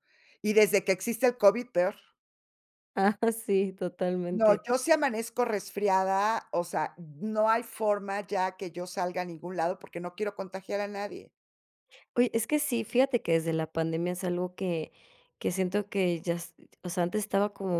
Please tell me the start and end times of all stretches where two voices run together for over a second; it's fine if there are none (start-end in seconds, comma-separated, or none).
none